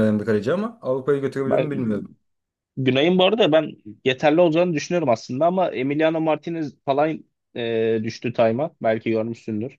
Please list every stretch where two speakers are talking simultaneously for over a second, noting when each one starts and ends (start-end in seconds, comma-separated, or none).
none